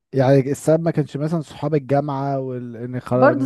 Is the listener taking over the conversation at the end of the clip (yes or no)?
yes